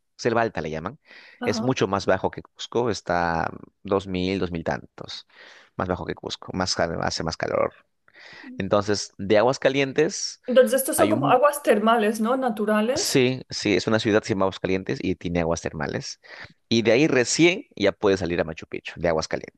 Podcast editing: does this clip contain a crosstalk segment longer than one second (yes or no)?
no